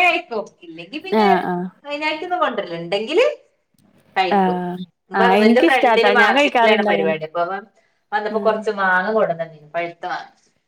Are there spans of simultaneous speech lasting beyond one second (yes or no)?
yes